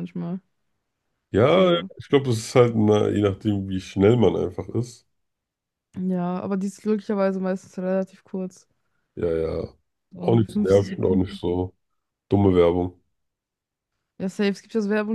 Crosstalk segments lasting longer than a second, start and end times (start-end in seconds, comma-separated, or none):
10.2-11.4